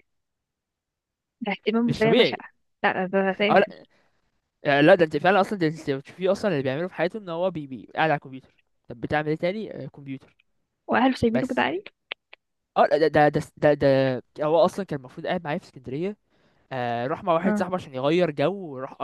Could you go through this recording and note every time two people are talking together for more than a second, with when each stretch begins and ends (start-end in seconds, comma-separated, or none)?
none